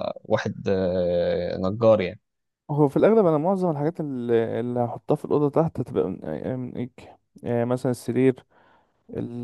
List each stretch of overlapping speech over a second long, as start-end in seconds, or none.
none